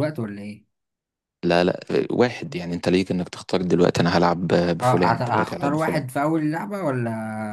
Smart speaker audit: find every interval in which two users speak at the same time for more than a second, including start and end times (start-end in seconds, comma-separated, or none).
4.8-6.0